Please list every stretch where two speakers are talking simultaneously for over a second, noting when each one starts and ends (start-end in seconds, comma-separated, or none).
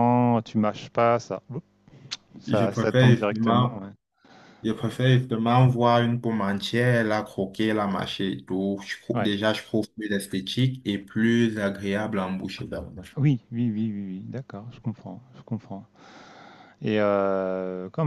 2.5-3.8